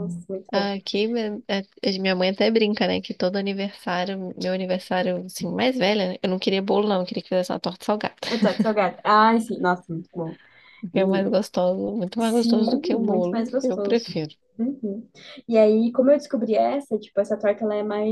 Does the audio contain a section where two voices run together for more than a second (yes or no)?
yes